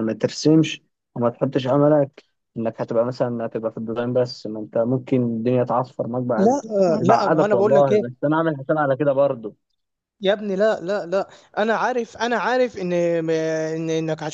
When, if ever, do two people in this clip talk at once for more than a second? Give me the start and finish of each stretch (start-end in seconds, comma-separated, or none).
6.4-8.1